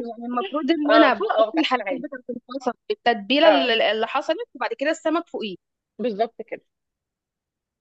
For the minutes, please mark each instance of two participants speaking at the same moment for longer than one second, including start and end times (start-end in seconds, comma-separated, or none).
0.9-2.1